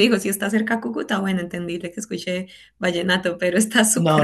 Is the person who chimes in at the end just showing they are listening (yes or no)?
no